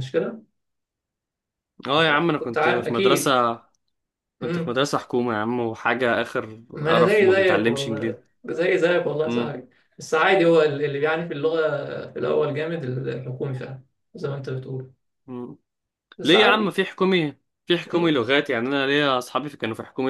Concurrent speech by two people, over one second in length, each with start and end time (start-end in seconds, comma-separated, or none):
1.9-3.3, 6.7-8.2